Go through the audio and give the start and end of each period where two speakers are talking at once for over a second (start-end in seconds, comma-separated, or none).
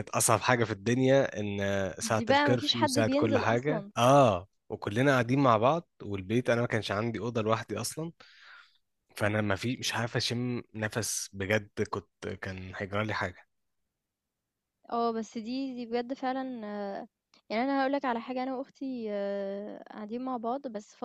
2.1-3.9